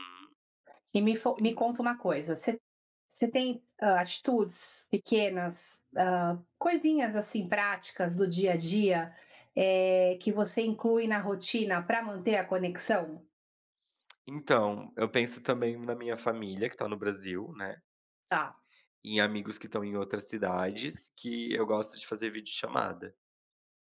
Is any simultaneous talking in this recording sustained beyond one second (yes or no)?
no